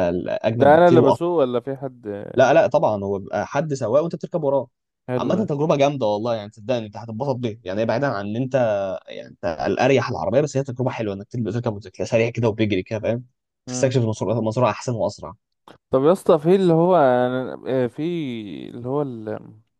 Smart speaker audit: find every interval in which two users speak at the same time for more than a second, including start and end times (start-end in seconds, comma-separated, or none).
none